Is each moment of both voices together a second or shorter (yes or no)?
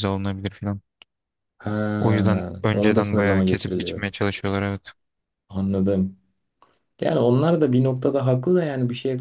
no